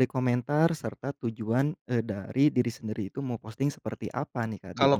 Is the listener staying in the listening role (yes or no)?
no